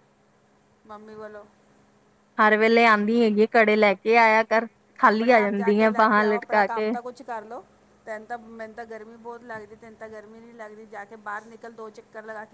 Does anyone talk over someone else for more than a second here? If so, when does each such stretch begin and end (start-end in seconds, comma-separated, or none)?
5.1-6.9